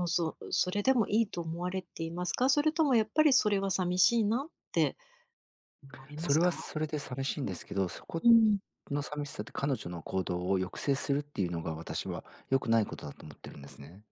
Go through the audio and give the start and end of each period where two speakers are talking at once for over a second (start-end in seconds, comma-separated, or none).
none